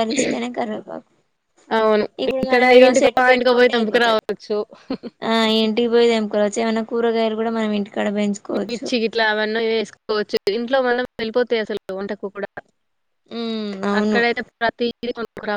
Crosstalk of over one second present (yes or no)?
yes